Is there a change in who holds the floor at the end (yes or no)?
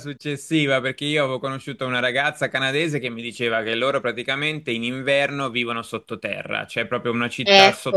no